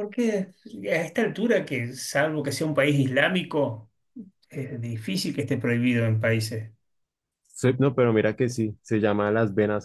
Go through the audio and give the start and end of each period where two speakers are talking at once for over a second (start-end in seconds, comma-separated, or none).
none